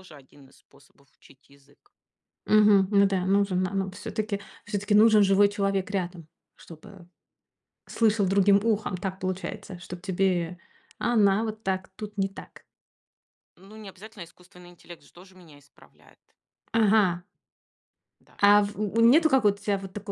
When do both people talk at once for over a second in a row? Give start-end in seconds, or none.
none